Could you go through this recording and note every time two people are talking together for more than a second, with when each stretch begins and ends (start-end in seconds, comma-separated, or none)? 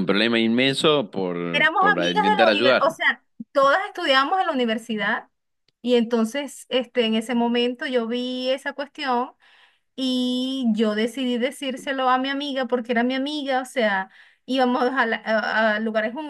1.5-3.0